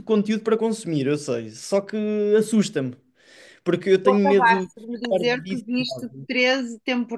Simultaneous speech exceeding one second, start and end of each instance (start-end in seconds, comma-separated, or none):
4.0-6.3